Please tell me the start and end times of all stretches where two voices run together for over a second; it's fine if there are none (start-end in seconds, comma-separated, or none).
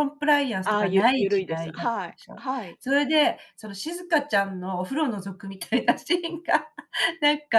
0.6-2.4